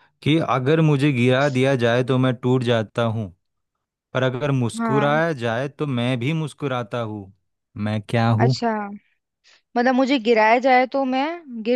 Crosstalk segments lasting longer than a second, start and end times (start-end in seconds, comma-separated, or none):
none